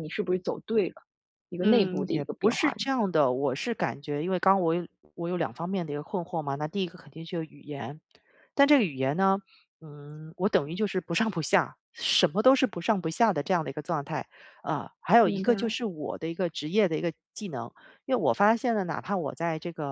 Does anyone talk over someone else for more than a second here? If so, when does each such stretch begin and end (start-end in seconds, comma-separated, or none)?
1.6-2.9